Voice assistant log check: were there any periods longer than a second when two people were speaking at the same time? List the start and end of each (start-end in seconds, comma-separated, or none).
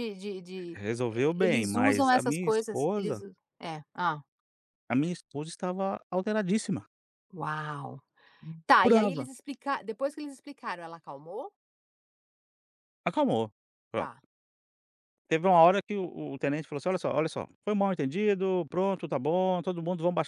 0.8-3.2